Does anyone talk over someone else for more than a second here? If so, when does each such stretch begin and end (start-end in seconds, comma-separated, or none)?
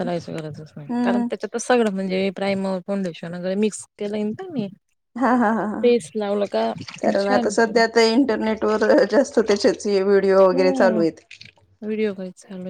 none